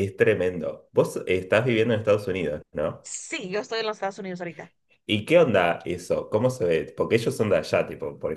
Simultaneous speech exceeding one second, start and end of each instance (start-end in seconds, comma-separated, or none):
none